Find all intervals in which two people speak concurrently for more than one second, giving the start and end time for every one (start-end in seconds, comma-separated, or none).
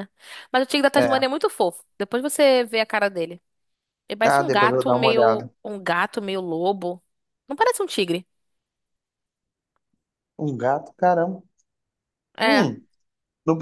4.2-5.5